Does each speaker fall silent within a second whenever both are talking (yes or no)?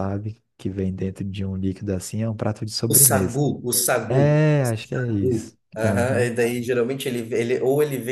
no